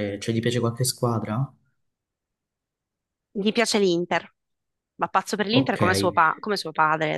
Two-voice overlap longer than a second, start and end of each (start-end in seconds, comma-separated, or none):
none